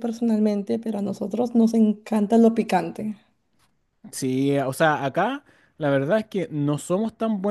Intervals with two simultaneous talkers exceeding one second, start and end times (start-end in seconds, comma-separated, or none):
none